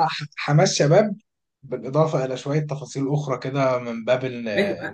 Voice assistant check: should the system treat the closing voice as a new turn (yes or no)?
yes